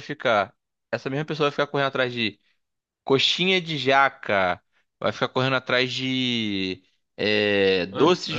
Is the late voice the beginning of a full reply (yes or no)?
no